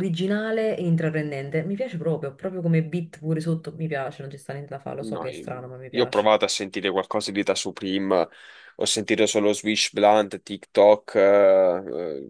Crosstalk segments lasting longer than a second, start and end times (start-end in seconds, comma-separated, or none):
5.0-6.3